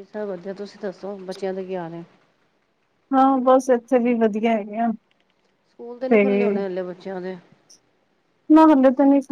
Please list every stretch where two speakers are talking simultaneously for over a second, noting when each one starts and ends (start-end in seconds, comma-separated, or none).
none